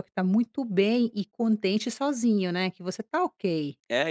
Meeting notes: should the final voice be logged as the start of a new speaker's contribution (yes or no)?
yes